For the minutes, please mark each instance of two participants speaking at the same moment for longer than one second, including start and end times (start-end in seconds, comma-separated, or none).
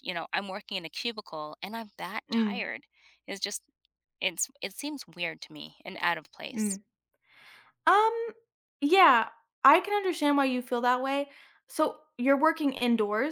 none